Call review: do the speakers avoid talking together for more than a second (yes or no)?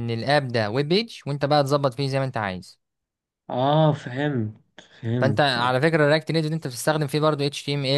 yes